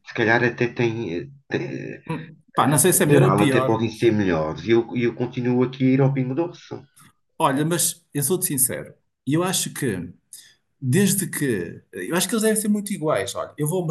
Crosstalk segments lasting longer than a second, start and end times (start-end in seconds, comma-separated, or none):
2.9-4.1